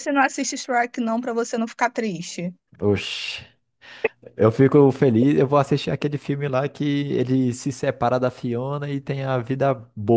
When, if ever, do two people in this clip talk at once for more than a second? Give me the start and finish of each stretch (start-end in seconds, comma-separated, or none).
none